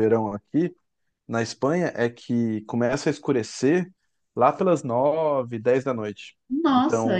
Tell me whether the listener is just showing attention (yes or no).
no